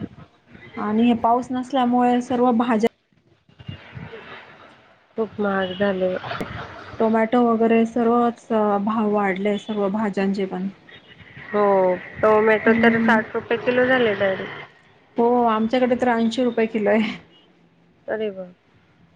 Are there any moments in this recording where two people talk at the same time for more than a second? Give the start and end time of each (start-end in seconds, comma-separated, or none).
none